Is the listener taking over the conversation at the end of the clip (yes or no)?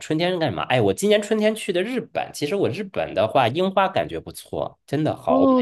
yes